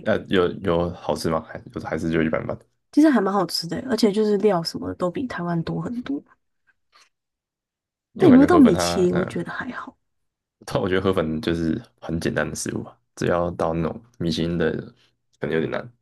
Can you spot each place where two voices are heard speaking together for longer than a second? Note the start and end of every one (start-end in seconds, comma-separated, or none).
8.2-9.4